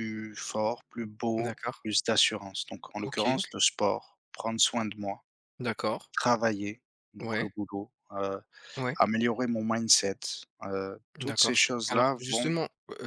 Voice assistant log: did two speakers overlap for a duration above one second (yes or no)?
yes